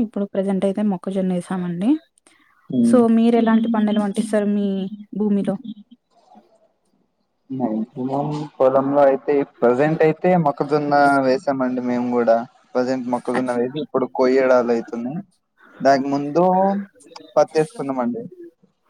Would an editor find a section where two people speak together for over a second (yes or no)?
no